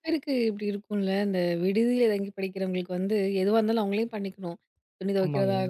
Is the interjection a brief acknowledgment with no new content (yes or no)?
yes